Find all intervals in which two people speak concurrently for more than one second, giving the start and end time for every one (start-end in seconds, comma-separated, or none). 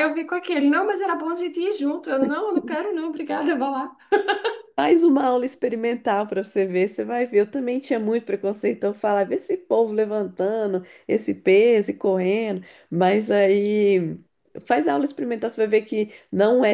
none